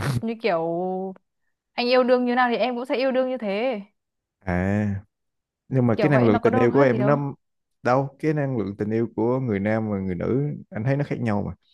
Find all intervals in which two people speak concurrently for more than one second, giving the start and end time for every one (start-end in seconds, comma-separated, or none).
6.0-7.2